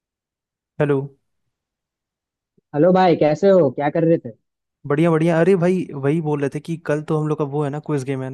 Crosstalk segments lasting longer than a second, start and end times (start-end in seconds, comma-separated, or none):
none